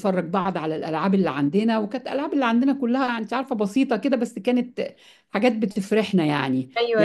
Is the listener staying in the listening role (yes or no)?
no